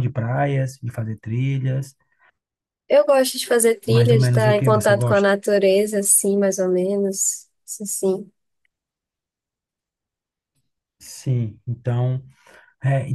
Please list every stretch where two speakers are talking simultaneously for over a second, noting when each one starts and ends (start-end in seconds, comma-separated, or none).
3.9-5.3